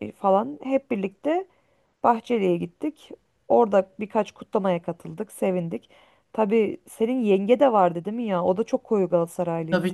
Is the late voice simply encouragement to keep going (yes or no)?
no